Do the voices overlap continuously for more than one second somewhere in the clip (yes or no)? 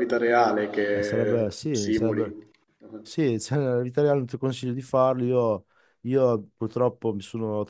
yes